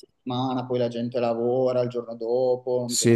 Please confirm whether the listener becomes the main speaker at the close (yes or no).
yes